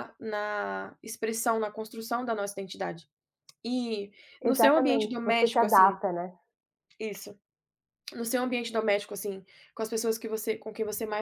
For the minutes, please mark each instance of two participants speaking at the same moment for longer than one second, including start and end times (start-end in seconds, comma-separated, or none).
4.4-6.0